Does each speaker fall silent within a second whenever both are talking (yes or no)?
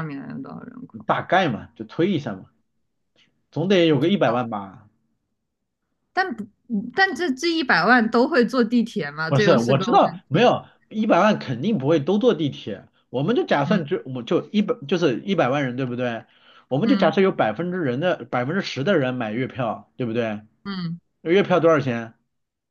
no